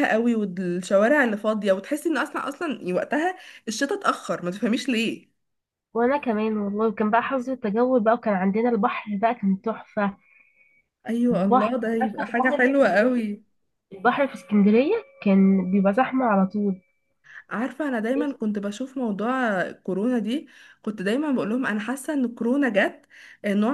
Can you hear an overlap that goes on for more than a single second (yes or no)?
yes